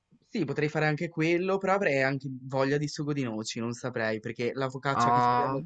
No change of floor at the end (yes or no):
yes